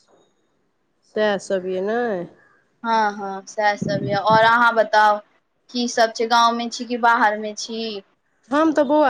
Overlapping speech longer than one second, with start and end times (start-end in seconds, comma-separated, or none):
none